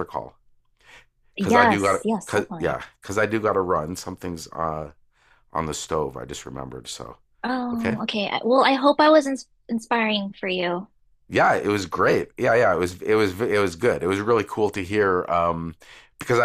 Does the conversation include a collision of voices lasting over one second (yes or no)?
yes